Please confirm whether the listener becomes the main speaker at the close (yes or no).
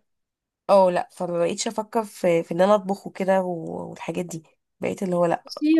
yes